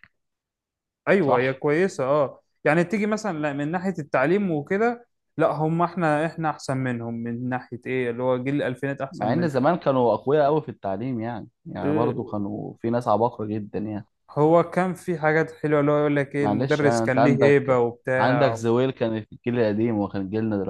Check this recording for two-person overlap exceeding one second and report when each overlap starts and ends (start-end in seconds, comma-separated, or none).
16.4-18.6